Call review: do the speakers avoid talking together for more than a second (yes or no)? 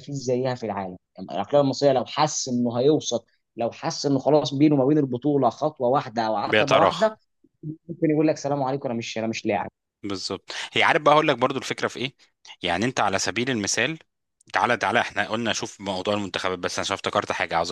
yes